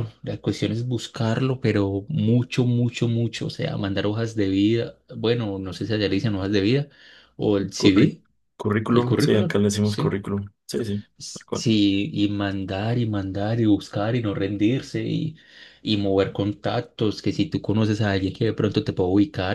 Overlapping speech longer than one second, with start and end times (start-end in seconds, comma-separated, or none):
8.9-10.2